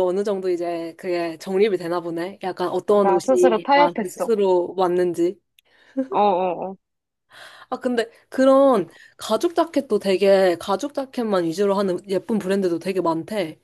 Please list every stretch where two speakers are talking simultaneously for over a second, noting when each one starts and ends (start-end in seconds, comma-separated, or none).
3.0-4.3